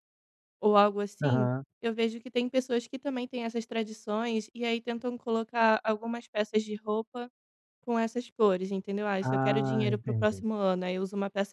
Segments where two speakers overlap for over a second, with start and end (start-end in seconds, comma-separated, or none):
9.2-10.4